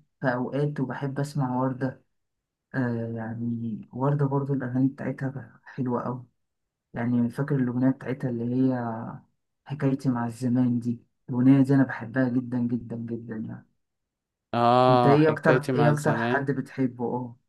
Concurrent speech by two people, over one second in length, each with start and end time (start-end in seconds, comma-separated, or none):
14.9-16.5